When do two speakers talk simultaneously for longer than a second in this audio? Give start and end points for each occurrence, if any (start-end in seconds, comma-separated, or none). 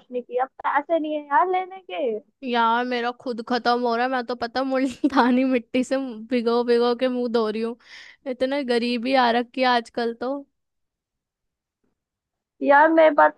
none